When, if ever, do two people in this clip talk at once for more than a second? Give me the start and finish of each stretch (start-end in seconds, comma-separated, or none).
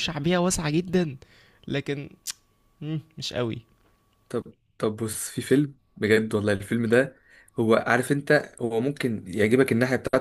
none